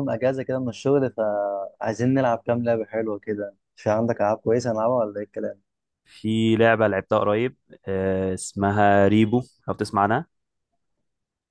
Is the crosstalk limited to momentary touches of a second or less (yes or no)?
yes